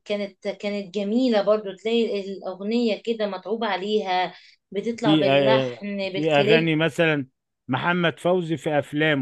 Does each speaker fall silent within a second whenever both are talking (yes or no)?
no